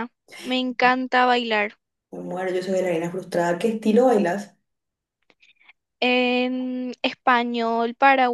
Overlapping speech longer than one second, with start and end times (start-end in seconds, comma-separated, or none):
none